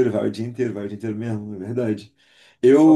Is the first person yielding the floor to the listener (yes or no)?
no